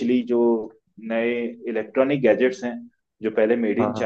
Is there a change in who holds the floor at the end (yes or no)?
no